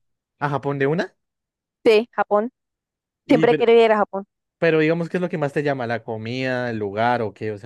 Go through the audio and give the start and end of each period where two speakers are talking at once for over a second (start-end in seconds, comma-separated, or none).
none